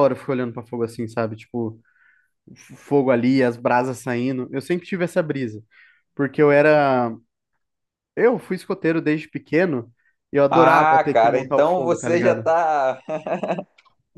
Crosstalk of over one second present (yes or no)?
yes